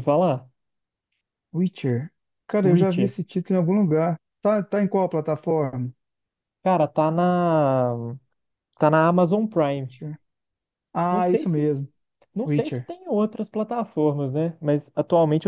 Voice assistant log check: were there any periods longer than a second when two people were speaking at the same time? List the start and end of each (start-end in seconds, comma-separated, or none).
none